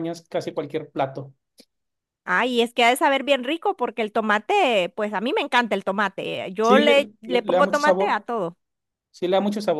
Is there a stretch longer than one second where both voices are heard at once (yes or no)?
yes